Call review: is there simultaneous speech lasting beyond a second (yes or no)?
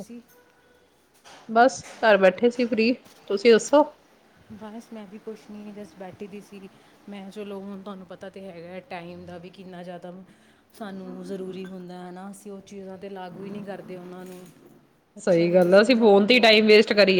yes